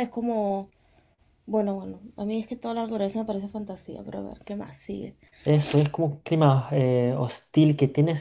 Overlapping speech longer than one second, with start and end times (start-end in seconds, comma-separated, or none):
none